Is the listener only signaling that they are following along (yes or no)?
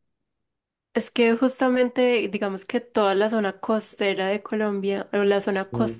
yes